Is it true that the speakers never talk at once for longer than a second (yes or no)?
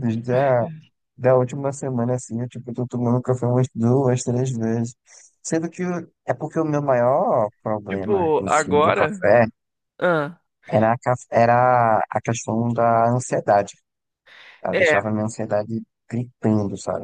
no